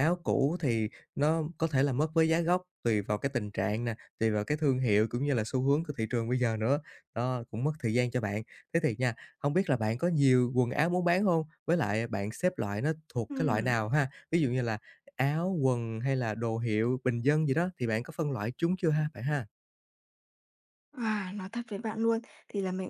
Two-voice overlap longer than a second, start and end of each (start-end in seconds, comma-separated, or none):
none